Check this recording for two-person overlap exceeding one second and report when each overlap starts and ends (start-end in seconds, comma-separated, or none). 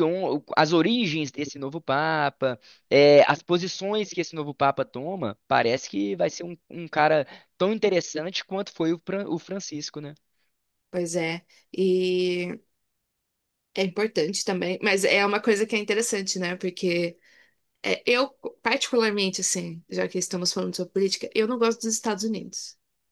none